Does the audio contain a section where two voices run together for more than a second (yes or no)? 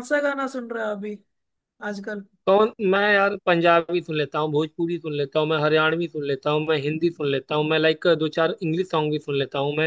no